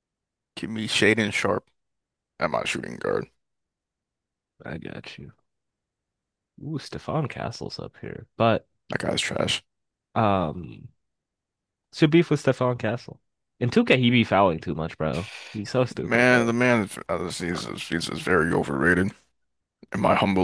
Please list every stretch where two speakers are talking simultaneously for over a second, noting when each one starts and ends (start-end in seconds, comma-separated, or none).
none